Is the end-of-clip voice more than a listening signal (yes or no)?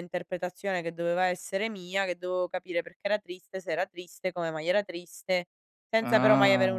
no